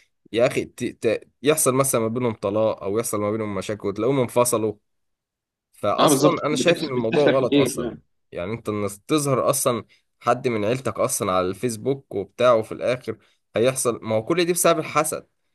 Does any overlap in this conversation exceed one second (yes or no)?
yes